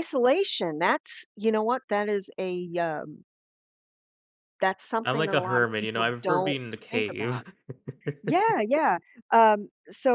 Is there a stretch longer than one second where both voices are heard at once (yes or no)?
yes